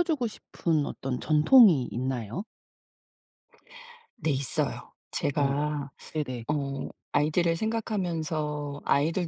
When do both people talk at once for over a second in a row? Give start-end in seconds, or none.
none